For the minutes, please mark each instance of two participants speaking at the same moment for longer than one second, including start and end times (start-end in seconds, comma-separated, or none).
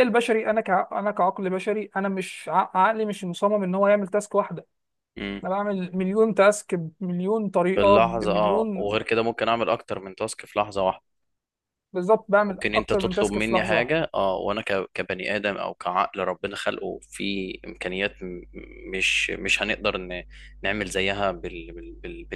7.8-8.9, 12.5-14.0